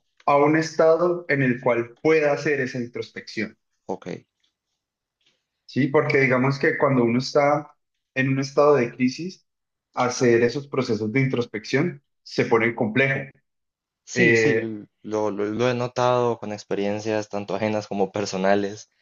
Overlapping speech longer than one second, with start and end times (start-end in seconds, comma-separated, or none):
none